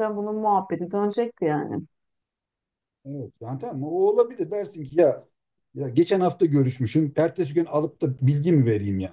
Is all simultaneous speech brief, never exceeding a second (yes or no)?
yes